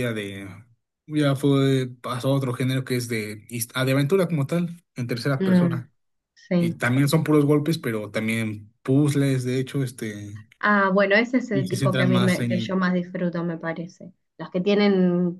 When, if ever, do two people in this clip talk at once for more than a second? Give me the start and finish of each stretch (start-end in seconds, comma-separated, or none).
11.5-12.8